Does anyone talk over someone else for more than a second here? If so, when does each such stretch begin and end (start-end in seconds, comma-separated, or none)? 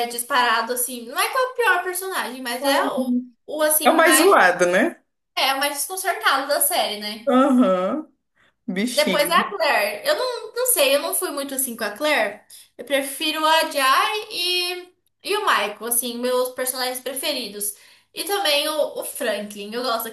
none